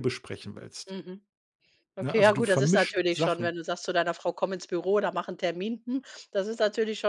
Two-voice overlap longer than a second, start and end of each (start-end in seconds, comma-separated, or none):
2.0-3.6